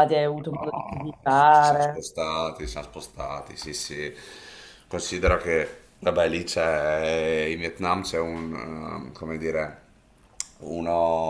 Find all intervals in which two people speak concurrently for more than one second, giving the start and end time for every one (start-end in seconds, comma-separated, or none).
0.5-2.0